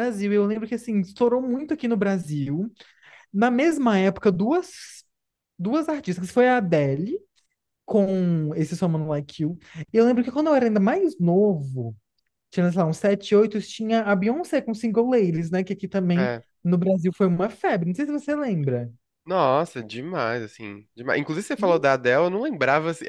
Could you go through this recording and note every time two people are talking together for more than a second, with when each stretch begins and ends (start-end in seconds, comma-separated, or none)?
none